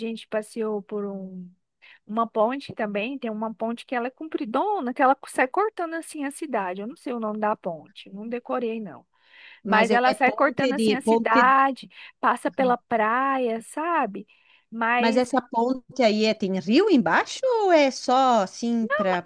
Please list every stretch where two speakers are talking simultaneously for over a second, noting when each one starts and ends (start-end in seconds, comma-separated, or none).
9.6-11.5